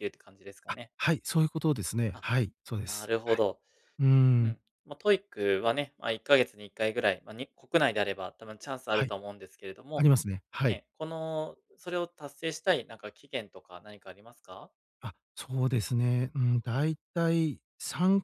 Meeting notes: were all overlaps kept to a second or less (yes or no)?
yes